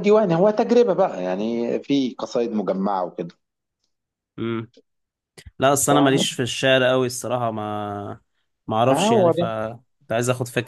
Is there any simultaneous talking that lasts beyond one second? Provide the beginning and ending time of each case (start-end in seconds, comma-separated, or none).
none